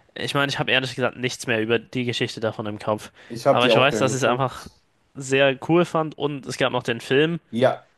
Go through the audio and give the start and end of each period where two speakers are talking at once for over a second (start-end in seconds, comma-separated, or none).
3.5-4.7